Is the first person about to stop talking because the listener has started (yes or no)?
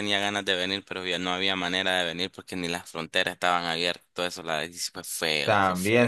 yes